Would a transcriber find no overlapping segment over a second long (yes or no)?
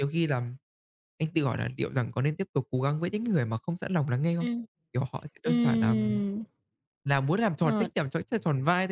yes